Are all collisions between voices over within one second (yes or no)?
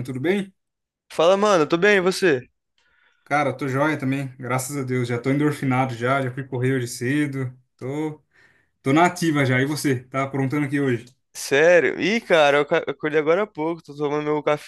yes